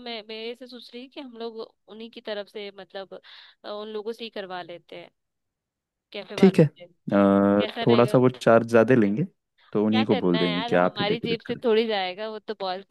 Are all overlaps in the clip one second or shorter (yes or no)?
no